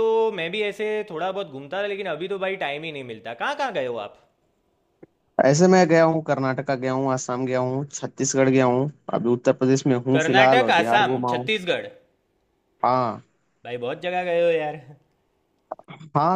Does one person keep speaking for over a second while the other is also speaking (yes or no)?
yes